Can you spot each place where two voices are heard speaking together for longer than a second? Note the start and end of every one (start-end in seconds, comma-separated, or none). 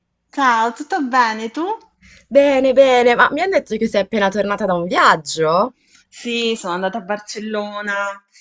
none